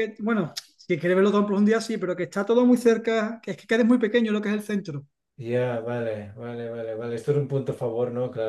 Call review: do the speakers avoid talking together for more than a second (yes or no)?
yes